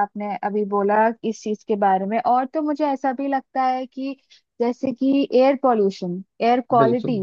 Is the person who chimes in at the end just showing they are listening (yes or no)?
yes